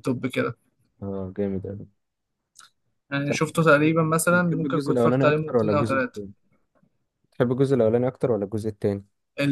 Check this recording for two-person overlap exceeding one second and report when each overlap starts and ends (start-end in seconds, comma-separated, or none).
4.3-6.2